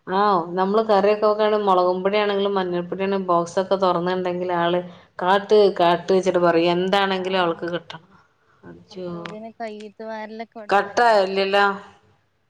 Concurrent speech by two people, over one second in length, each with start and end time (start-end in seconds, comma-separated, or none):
none